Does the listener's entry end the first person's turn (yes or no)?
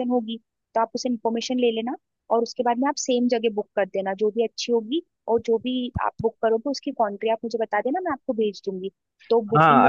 yes